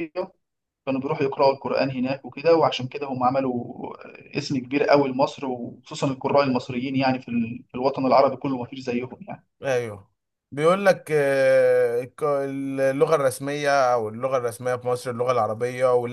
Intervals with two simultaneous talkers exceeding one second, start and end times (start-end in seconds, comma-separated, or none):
none